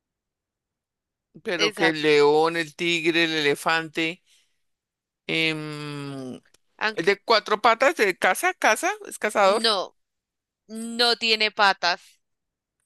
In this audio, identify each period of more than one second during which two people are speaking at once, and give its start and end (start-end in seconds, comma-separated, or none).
none